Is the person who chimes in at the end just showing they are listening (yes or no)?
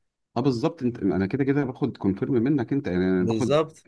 yes